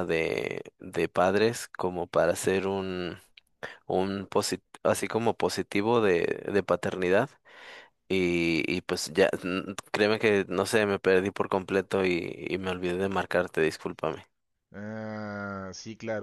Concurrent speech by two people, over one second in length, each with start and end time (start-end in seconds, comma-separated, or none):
none